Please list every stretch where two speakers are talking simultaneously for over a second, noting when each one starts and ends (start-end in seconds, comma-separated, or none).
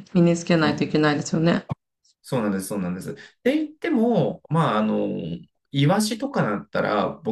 none